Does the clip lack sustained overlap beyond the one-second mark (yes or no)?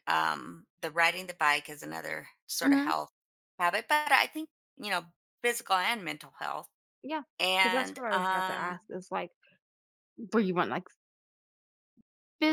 no